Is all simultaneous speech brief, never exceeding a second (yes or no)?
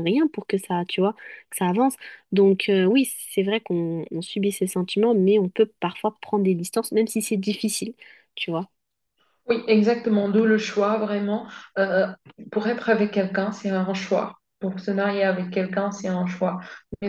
yes